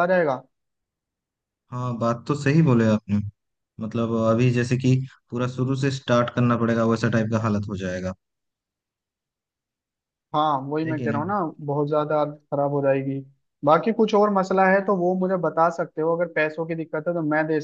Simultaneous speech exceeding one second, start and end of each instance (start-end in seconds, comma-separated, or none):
none